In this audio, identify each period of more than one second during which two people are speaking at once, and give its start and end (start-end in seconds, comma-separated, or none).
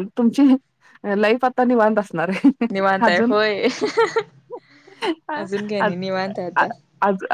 none